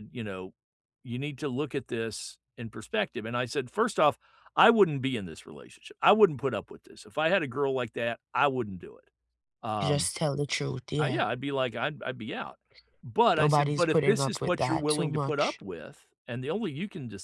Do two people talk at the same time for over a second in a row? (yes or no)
yes